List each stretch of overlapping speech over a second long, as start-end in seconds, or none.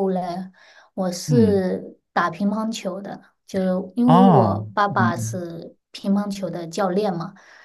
4.0-5.4